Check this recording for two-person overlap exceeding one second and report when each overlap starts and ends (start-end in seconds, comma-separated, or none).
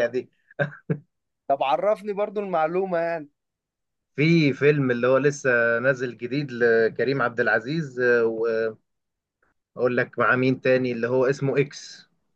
none